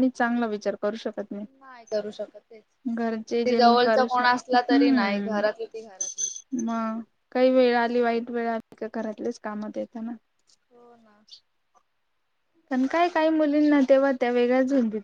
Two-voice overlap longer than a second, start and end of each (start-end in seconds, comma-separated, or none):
3.5-5.4